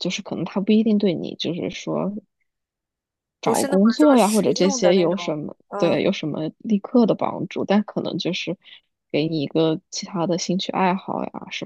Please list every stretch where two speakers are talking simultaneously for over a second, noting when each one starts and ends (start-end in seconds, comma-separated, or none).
3.4-6.0